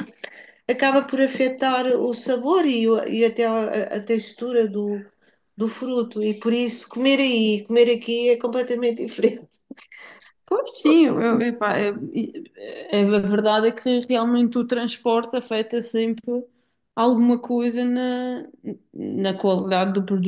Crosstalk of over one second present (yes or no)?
no